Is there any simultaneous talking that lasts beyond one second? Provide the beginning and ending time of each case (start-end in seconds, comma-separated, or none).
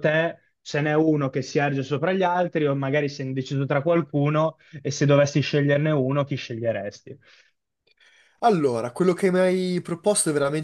none